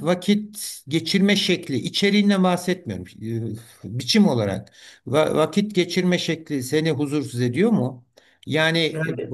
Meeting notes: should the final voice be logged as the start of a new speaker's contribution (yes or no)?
no